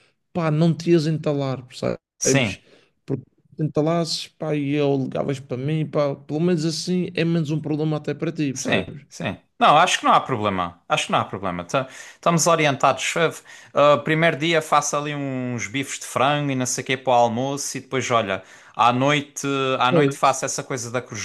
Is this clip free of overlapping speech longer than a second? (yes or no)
yes